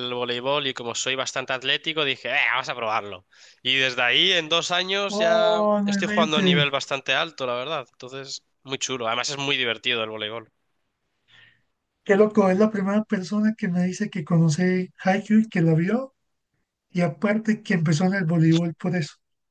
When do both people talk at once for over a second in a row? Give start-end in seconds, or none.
5.1-6.6